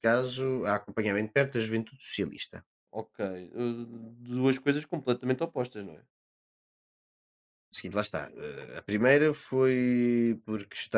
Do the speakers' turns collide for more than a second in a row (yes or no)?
no